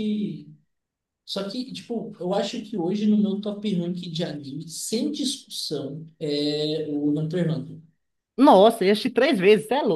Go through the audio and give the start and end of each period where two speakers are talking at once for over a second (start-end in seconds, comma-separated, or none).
none